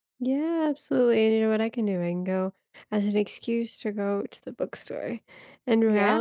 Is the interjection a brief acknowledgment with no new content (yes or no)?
yes